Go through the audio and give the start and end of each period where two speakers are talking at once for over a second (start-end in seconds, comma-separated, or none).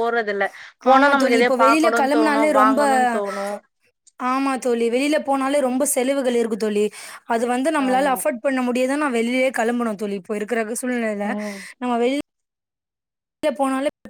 0.9-2.5